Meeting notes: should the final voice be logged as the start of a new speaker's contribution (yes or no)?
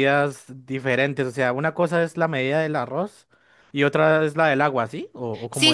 yes